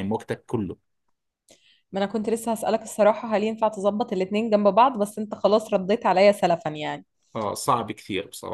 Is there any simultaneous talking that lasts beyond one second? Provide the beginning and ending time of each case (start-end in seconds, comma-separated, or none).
none